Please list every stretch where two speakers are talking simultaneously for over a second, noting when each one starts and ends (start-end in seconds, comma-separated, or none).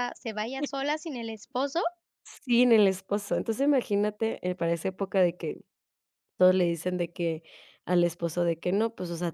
none